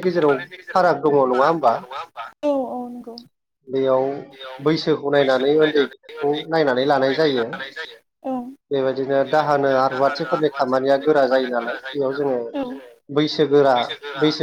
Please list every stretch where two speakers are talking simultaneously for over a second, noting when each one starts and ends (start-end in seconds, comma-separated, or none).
none